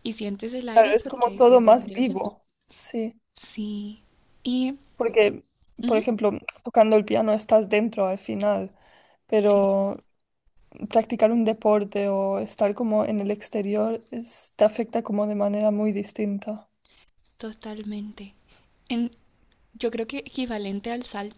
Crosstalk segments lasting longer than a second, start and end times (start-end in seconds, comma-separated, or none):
0.7-2.3